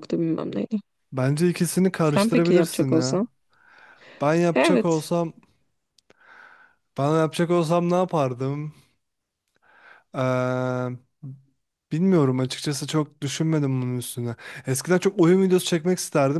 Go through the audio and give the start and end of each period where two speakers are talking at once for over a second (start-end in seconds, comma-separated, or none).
2.0-3.2